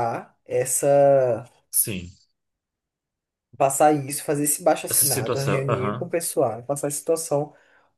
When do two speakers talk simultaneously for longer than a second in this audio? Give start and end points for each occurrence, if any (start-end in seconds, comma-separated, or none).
4.9-6.1